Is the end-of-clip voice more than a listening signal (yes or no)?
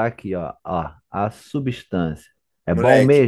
yes